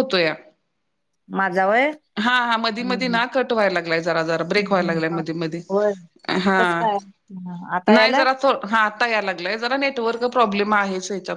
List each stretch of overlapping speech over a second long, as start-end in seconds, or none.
none